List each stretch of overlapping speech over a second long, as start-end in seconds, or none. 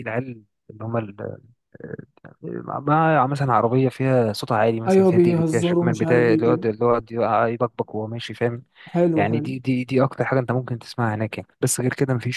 4.9-6.6